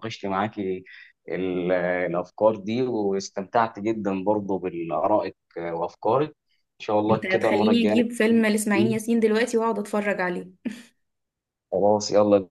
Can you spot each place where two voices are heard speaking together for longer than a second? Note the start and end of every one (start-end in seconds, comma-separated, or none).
7.1-9.0